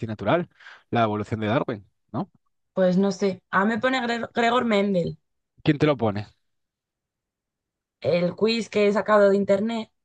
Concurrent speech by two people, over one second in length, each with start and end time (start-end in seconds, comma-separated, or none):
none